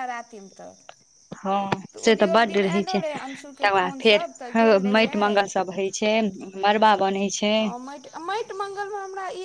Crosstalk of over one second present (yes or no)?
yes